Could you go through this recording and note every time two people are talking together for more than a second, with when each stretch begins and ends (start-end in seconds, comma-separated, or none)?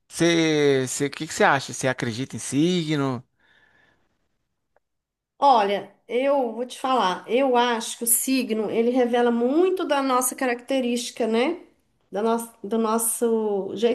none